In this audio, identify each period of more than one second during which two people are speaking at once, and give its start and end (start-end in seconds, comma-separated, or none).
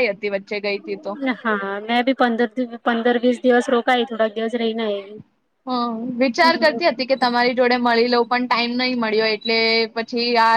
none